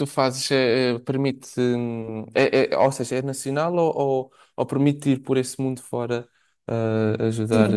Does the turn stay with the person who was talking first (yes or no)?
no